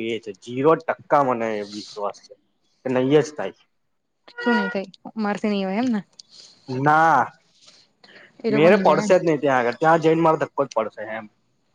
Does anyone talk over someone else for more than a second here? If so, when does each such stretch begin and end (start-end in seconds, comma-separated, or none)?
none